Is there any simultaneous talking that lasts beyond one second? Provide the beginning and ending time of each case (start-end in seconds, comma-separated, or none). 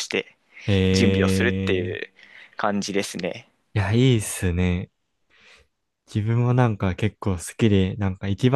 0.9-2.1